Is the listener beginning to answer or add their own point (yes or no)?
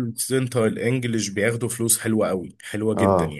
yes